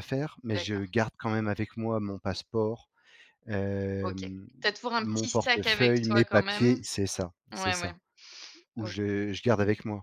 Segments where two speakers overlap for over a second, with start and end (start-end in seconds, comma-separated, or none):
5.0-6.8